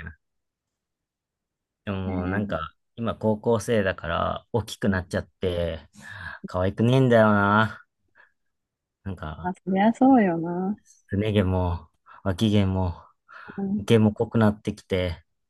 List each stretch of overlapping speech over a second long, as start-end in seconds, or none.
none